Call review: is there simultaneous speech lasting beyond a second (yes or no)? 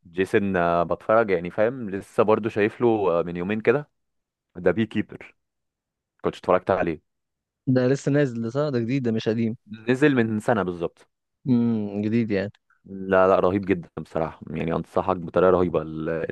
no